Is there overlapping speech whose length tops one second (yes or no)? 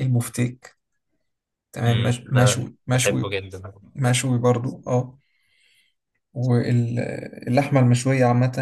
yes